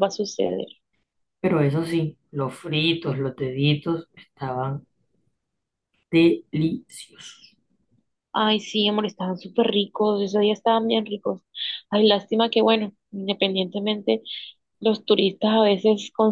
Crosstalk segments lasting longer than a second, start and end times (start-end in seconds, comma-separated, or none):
none